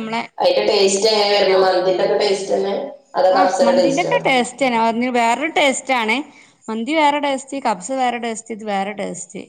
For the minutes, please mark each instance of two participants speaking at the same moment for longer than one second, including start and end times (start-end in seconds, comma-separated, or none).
none